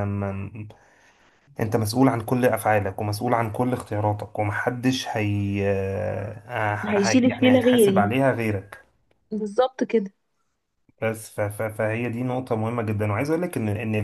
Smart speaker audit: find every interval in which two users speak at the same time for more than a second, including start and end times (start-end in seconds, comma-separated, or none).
6.9-8.1